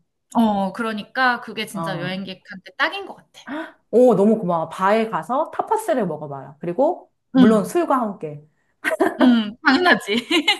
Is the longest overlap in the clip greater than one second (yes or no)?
no